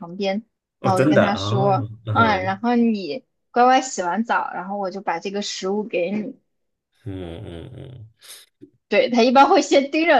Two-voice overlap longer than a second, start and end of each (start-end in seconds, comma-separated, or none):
0.8-2.6